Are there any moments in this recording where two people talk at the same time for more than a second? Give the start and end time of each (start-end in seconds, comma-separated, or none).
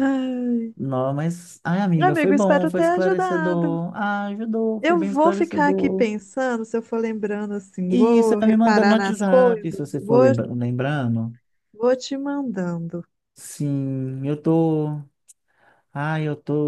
2.0-3.8, 4.8-6.1, 7.9-10.3